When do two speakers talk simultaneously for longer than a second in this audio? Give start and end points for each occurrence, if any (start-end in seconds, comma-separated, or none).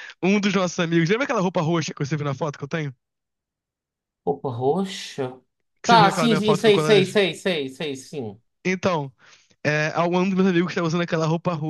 5.8-7.2